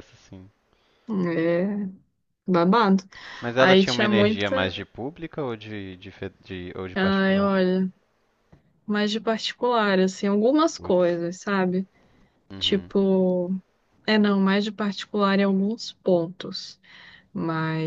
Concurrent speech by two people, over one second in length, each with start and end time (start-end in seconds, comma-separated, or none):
3.6-4.8